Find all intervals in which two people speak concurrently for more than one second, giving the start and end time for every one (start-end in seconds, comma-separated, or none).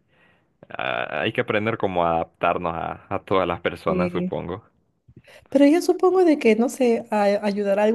none